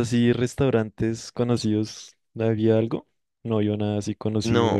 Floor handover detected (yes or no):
yes